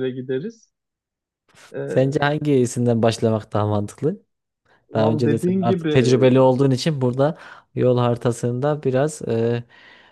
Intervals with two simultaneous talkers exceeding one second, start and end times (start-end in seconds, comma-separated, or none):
4.9-6.2